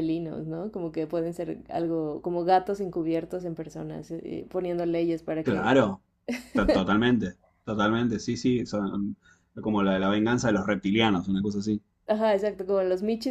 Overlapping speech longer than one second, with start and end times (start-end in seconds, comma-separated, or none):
none